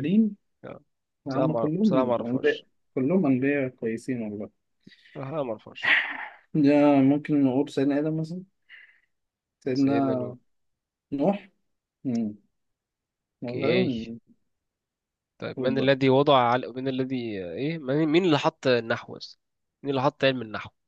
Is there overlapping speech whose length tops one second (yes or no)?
yes